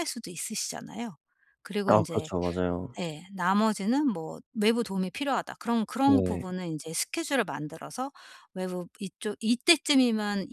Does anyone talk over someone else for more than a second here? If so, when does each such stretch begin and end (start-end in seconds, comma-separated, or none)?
none